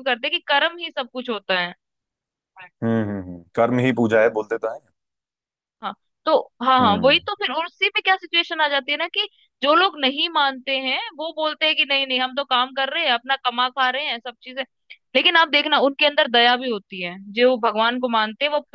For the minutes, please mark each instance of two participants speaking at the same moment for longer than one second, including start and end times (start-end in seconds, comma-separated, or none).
none